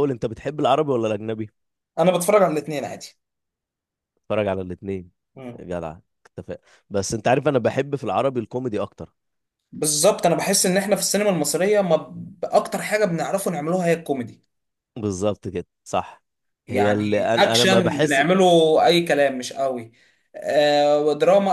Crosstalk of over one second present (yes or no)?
yes